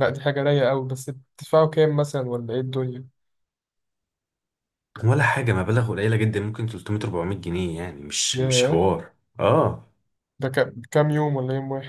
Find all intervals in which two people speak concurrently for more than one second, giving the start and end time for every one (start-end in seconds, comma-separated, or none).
none